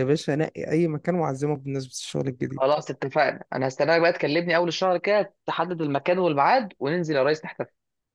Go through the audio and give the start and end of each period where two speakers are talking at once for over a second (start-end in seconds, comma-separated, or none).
none